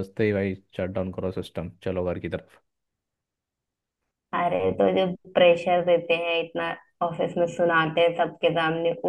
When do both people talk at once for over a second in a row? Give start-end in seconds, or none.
none